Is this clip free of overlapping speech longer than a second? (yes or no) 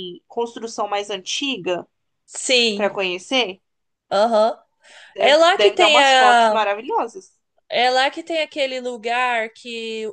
no